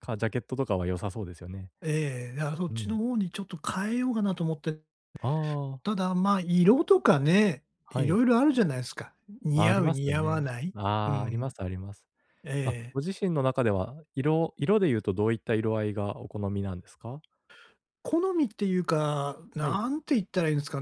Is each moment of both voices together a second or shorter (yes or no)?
no